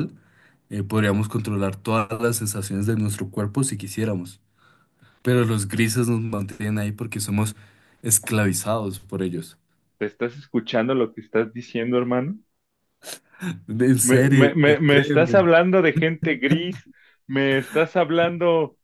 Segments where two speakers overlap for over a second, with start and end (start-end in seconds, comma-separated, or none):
14.0-15.5